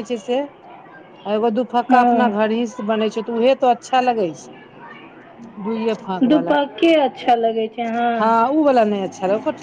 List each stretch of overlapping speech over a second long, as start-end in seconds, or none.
none